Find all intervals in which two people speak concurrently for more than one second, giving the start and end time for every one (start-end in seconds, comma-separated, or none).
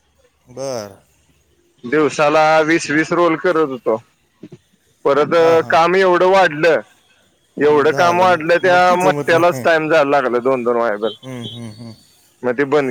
7.6-9.6